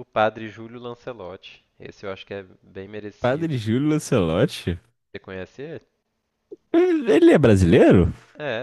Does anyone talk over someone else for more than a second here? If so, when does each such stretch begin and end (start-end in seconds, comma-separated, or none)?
none